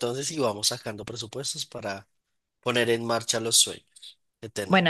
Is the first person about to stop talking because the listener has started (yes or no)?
yes